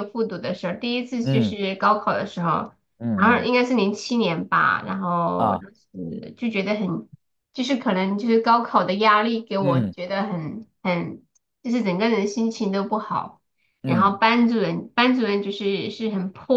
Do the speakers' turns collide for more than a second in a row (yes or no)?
no